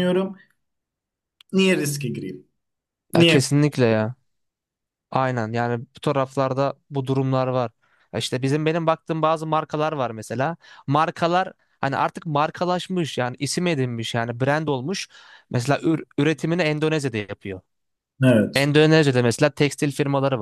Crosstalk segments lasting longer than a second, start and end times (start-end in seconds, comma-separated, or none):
none